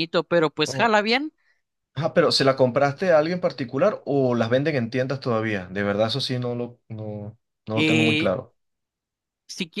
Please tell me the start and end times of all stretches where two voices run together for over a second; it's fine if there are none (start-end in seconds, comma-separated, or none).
none